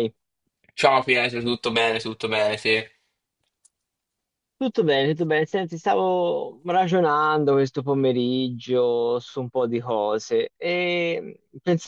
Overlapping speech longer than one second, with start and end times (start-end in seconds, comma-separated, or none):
none